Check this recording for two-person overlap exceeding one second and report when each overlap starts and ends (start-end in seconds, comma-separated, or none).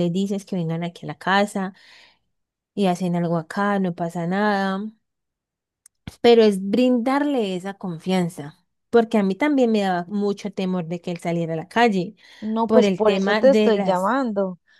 12.7-14.1